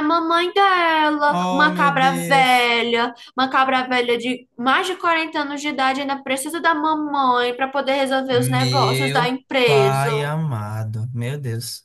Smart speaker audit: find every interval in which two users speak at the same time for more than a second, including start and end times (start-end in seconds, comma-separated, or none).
1.3-2.7, 8.3-10.1